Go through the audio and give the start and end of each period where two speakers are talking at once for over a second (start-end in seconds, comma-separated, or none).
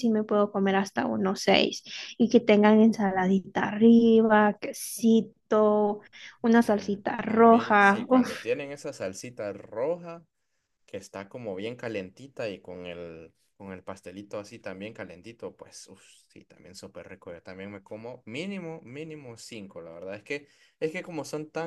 6.6-8.3